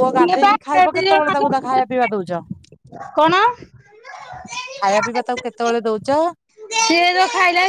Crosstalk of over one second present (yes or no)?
yes